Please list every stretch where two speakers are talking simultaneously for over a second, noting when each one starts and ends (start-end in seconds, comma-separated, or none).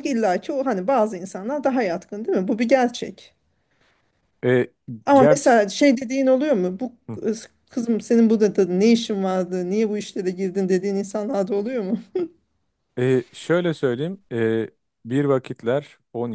none